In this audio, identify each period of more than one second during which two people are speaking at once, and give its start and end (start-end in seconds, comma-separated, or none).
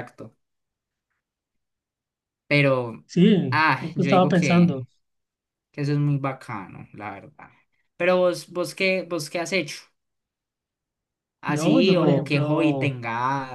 3.5-4.8, 11.4-12.9